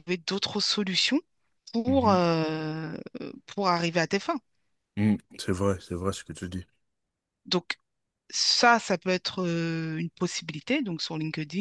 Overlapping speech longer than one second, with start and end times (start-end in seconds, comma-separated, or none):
none